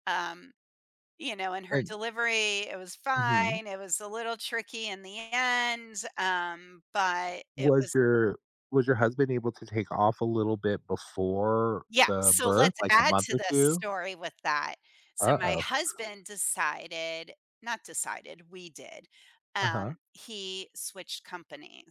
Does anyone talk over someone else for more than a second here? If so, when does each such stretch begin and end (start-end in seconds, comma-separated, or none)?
11.9-13.8